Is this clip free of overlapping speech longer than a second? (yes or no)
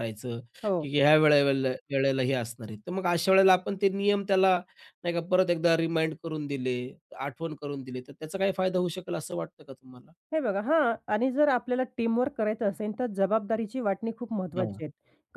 yes